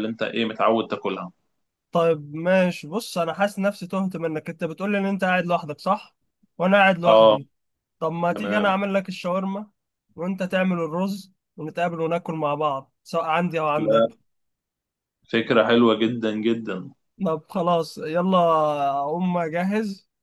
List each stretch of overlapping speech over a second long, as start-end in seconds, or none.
none